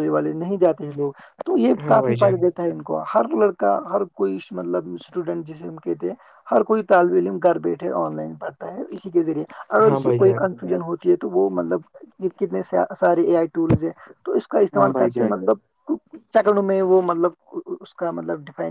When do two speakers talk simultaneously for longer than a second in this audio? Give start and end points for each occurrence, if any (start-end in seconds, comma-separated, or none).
none